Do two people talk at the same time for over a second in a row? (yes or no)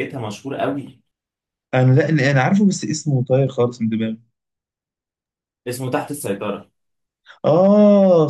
no